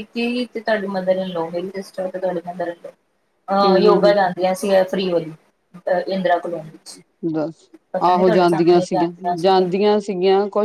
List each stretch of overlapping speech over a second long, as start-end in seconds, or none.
8.1-10.0